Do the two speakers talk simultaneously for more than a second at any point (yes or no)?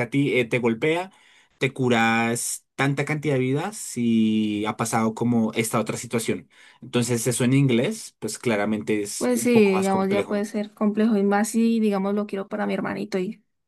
yes